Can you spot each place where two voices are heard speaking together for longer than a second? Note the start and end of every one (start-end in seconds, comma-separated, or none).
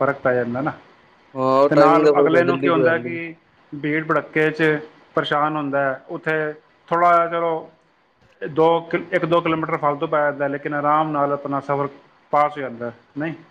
1.7-3.2